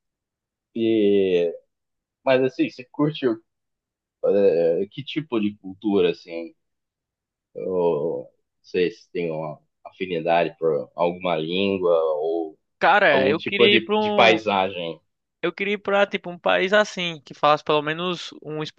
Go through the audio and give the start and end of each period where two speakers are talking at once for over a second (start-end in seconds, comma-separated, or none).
13.1-14.4